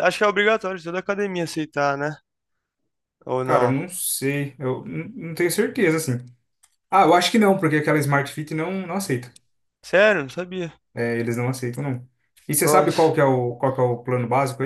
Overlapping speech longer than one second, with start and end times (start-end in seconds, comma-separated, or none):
none